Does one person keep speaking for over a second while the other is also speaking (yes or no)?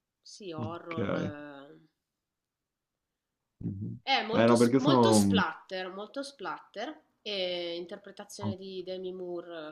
yes